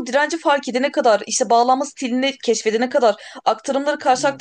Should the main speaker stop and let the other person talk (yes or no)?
no